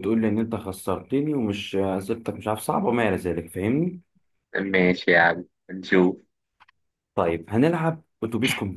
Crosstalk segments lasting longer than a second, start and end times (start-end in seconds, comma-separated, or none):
none